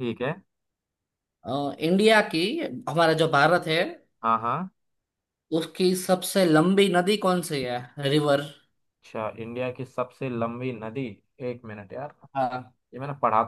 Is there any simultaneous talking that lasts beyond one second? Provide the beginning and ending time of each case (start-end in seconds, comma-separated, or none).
none